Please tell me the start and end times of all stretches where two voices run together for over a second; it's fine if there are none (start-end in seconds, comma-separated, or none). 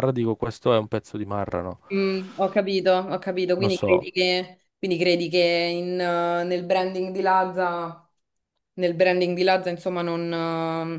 none